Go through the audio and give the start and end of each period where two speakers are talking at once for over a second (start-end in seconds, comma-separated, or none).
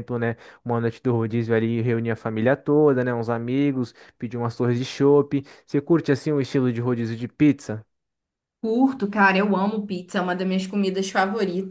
none